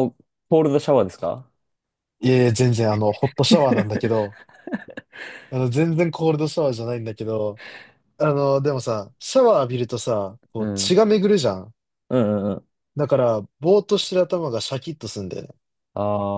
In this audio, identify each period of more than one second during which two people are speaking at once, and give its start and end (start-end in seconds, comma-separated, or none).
none